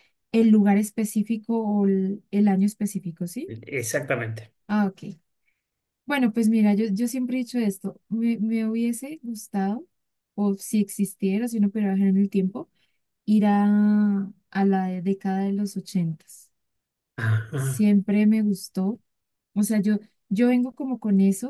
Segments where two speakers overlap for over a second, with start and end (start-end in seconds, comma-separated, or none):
none